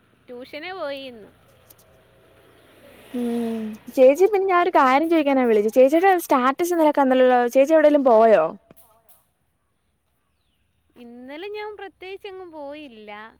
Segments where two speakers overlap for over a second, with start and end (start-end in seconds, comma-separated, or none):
none